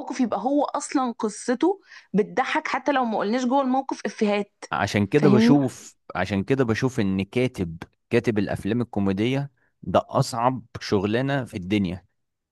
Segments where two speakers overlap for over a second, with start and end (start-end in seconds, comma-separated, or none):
none